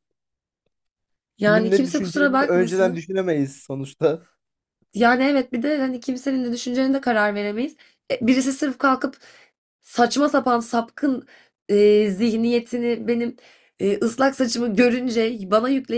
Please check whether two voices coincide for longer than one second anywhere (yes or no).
yes